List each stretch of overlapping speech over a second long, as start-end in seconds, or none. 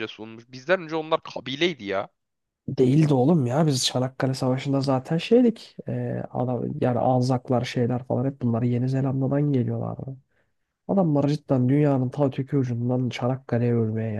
none